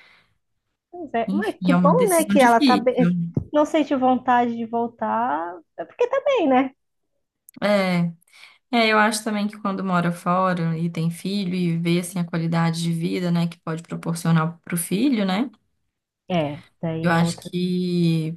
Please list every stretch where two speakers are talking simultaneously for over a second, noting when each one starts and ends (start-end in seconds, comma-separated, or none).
1.3-2.9